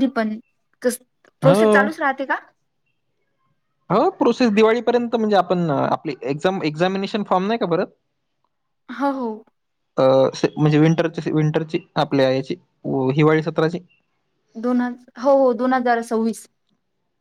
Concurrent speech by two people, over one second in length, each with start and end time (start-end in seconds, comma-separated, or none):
none